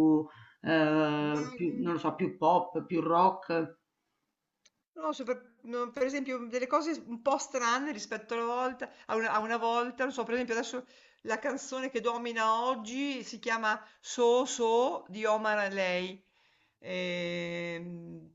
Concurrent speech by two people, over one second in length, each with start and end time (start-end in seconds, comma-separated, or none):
none